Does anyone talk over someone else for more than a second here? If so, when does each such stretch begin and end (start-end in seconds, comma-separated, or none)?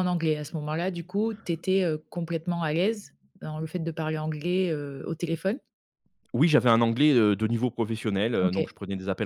none